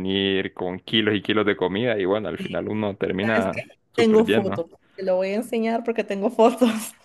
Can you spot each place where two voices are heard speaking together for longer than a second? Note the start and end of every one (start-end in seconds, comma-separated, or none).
3.2-4.6